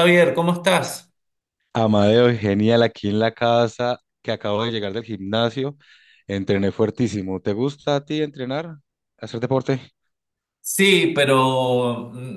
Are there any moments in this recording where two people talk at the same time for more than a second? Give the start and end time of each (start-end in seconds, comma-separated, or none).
none